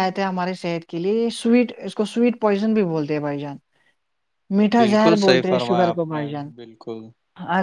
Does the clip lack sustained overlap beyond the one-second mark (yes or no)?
no